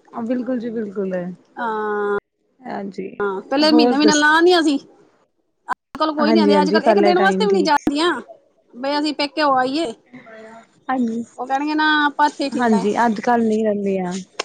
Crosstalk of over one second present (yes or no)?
yes